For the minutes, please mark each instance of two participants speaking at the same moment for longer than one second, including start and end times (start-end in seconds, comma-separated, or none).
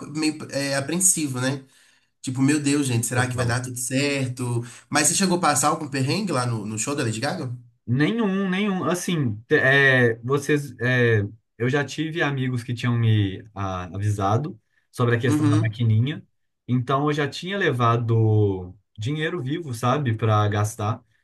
none